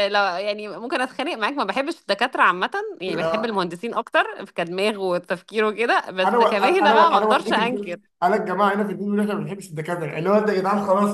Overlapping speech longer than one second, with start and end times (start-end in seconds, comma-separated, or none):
6.2-8.0